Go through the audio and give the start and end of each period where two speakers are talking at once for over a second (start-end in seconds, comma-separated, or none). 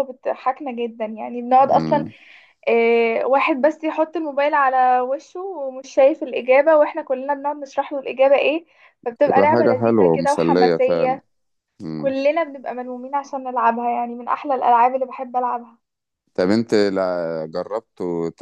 9.3-11.2